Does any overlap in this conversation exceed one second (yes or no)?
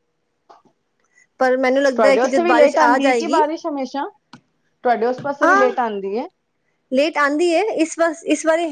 yes